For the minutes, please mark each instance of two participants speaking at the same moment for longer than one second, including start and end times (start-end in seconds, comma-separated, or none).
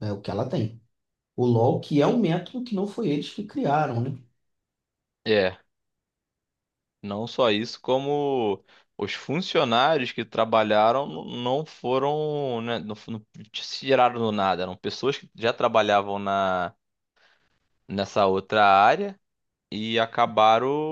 none